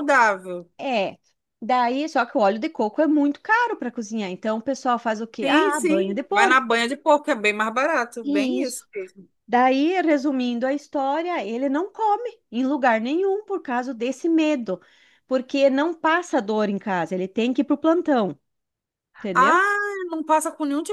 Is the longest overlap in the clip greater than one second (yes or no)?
yes